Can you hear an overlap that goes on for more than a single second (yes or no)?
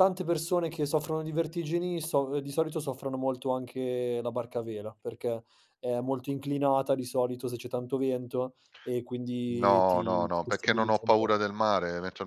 yes